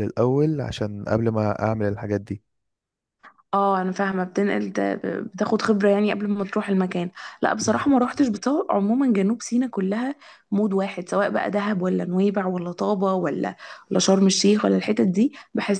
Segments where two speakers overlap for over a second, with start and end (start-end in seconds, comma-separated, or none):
none